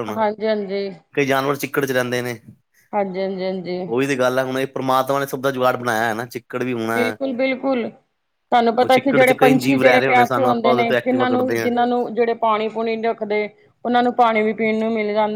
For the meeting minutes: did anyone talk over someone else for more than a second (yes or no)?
yes